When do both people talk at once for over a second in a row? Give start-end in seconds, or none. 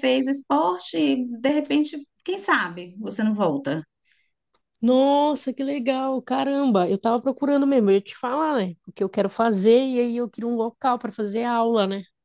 none